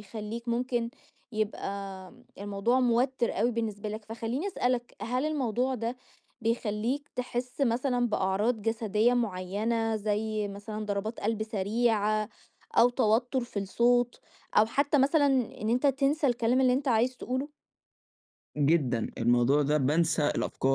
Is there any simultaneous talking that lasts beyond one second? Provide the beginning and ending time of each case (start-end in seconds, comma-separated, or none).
none